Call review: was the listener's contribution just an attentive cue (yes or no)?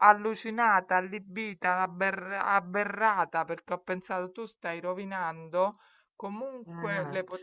yes